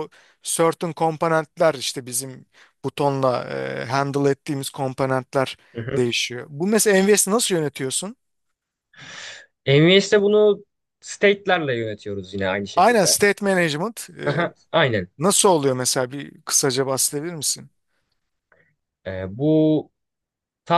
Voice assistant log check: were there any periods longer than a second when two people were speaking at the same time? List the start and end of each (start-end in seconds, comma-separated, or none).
none